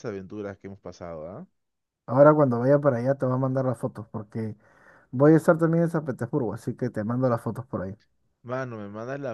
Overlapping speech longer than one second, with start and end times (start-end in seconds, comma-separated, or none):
none